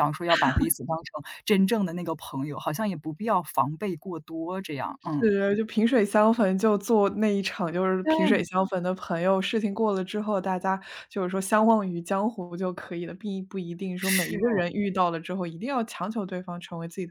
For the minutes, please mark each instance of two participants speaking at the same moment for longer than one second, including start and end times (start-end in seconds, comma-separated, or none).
none